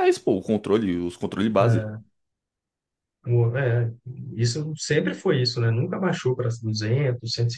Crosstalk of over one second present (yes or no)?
no